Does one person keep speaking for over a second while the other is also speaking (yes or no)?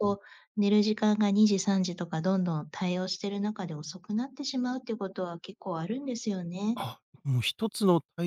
no